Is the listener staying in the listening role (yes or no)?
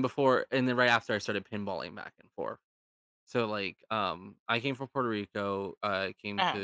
yes